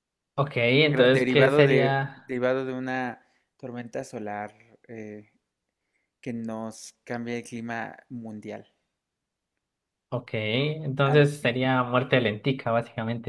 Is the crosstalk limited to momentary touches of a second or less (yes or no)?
no